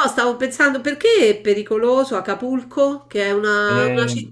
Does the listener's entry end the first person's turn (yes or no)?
no